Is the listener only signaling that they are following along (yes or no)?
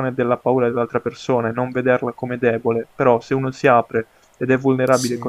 yes